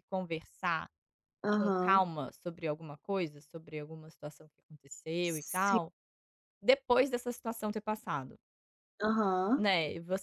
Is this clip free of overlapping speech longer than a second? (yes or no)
yes